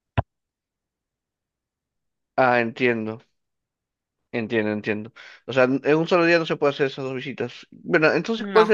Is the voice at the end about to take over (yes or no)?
no